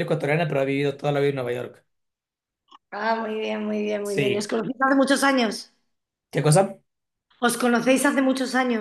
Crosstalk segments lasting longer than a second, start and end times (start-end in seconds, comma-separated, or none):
none